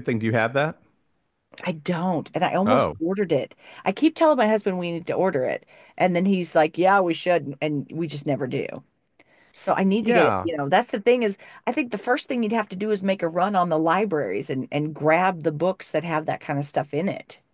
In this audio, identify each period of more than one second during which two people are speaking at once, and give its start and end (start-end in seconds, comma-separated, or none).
none